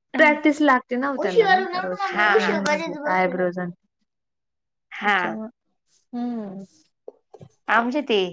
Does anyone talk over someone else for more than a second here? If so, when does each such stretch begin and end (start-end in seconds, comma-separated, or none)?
1.2-3.5